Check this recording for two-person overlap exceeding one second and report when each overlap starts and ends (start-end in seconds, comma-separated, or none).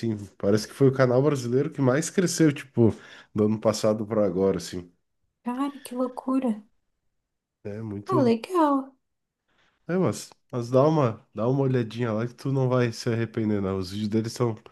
none